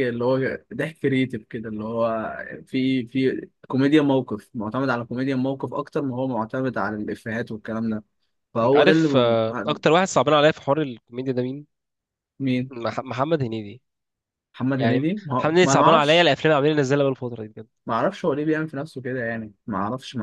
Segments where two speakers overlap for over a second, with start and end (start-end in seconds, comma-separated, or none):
8.6-9.8, 14.8-16.3